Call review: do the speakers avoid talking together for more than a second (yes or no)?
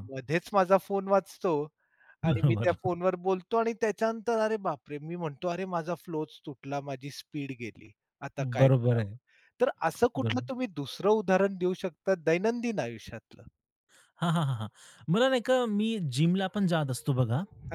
yes